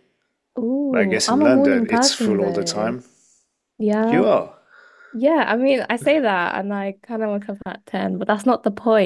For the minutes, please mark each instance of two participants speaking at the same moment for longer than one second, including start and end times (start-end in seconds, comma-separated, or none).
0.9-2.9